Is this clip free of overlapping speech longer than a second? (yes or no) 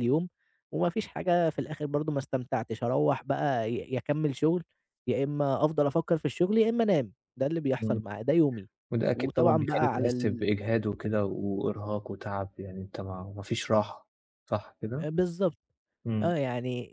no